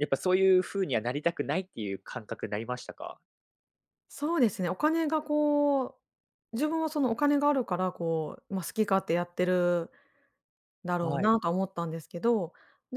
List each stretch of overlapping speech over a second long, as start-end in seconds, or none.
none